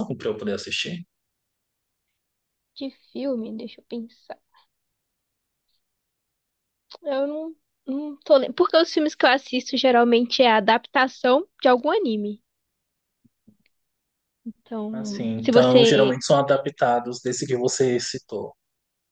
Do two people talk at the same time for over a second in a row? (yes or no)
yes